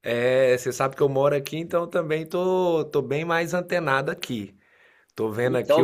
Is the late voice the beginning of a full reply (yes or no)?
yes